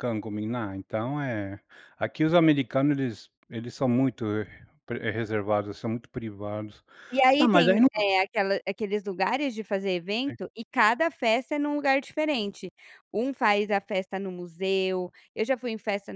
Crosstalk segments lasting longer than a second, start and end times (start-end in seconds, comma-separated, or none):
none